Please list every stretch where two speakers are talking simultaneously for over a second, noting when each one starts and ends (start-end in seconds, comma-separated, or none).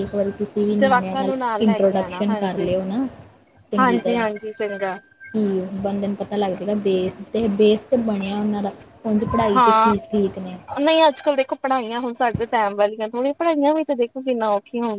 0.8-2.7